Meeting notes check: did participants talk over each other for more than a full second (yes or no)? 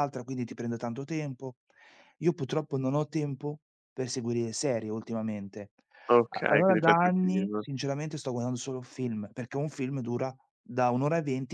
yes